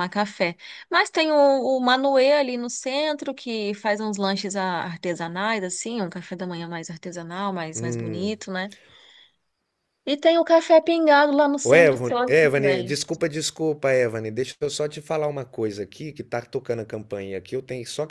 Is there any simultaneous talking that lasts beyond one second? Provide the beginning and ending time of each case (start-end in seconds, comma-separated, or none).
11.6-13.0